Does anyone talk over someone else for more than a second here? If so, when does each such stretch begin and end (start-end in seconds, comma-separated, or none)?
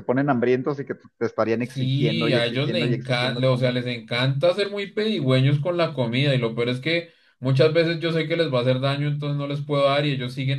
1.6-3.8